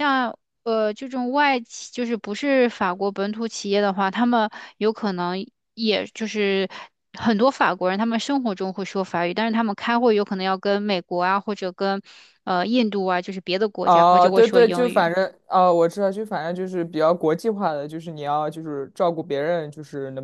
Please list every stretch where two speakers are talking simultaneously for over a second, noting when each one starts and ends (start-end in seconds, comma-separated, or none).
13.8-15.1